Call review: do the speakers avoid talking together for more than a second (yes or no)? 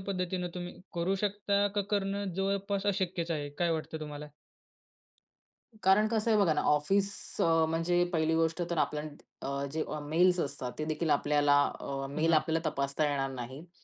yes